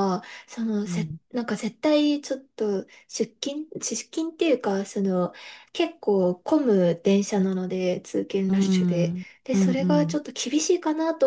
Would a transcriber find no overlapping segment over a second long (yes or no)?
no